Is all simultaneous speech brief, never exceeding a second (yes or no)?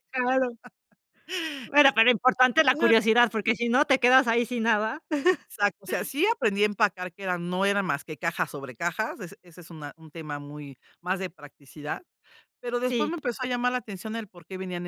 yes